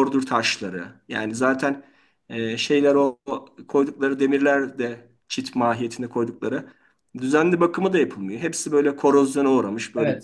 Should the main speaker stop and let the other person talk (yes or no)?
yes